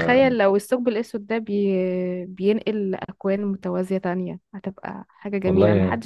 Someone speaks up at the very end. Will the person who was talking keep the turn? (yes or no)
yes